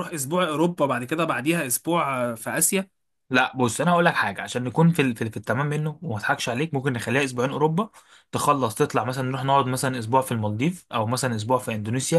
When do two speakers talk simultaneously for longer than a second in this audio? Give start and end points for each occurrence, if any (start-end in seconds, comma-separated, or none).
none